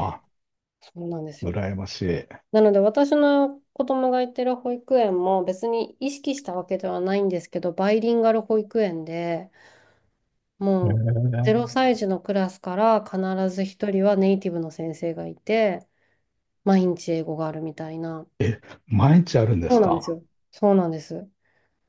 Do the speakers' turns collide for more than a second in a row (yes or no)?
no